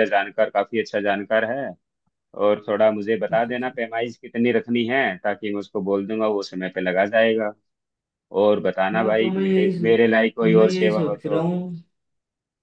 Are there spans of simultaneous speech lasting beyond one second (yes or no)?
yes